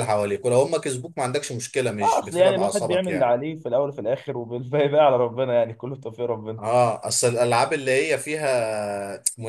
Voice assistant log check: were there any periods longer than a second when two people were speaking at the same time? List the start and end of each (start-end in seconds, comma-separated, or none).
2.0-3.3